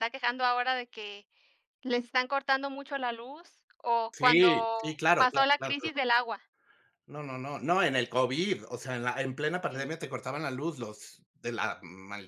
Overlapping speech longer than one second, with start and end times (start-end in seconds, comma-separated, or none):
4.1-6.0